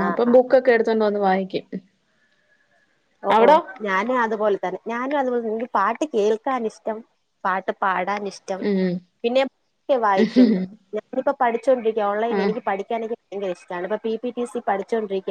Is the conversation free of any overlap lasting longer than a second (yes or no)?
yes